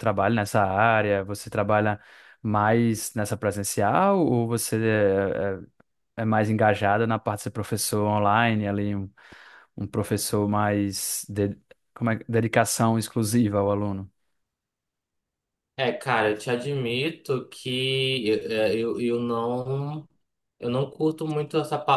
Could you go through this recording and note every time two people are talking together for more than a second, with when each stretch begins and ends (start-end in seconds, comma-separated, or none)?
none